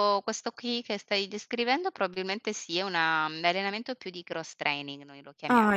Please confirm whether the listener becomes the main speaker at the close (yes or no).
no